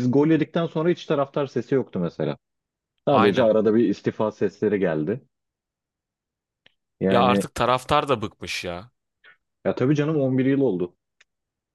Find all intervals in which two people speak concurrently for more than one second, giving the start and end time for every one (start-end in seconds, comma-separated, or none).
none